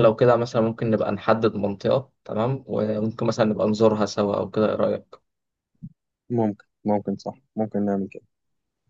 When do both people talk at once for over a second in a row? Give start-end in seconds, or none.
none